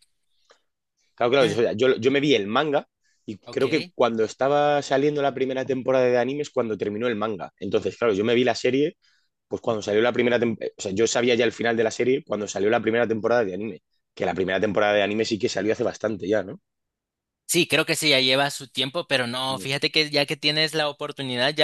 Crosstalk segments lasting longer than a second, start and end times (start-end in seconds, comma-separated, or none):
none